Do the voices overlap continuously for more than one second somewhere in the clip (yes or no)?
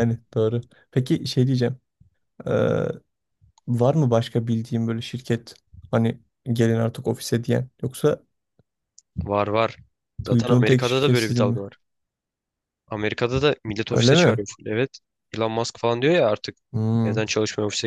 yes